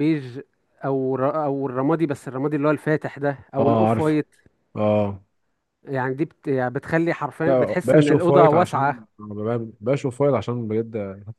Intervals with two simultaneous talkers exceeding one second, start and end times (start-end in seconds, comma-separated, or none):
7.4-9.1